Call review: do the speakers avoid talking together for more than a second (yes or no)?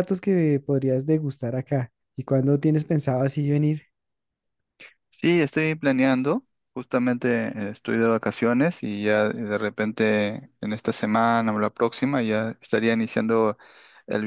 yes